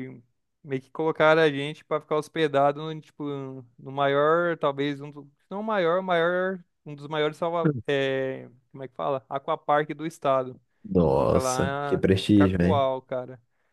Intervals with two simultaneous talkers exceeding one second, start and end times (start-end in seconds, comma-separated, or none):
11.0-12.9